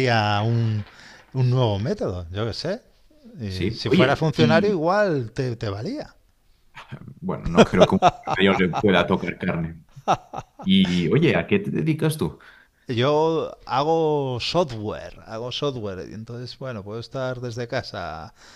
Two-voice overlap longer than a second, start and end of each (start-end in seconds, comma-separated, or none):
3.5-4.8